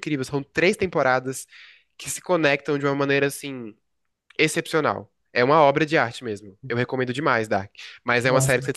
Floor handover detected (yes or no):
no